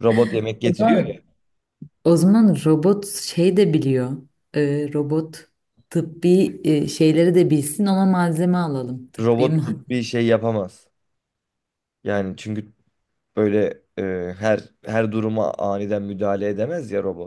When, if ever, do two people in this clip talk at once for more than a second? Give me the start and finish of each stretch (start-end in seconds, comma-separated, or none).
none